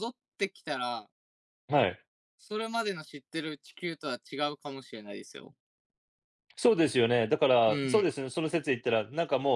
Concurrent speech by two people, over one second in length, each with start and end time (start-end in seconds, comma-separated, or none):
none